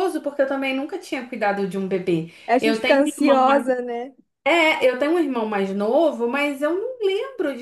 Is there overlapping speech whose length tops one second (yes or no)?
yes